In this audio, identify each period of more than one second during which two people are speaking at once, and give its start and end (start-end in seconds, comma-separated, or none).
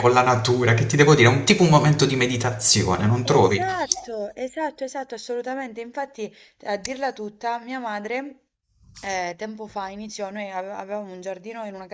none